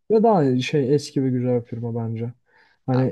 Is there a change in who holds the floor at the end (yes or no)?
no